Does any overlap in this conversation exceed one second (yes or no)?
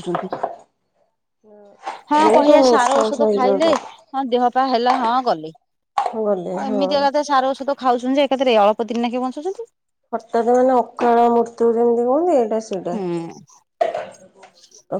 yes